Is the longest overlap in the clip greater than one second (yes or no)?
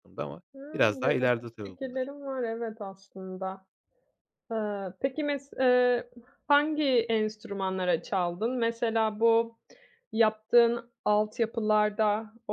yes